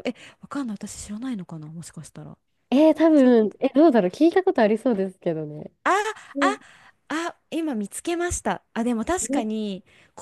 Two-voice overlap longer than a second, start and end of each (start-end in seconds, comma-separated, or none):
none